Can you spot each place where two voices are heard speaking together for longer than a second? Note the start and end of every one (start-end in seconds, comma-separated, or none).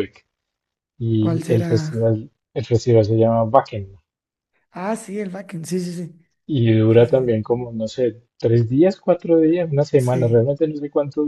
none